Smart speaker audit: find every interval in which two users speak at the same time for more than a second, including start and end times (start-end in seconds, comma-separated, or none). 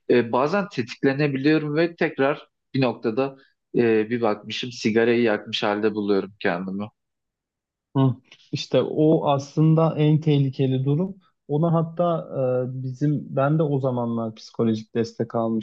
none